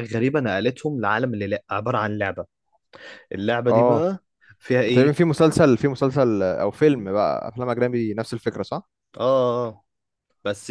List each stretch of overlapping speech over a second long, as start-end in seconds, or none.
none